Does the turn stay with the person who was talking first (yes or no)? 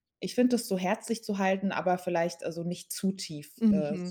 no